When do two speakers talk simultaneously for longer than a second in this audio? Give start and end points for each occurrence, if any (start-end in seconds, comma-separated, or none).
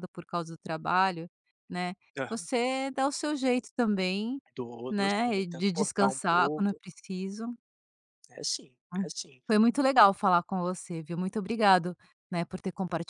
4.9-6.8